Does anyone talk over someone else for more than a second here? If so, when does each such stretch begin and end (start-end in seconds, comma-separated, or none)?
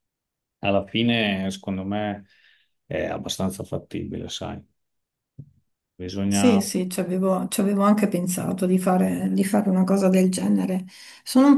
none